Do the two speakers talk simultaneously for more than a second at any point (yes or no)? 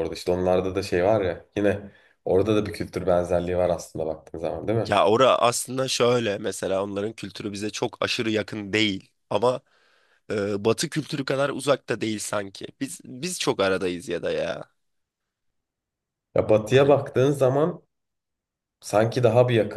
no